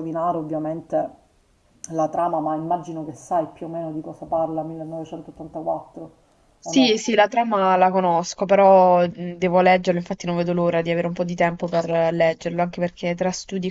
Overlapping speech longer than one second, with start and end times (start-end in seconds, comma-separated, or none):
none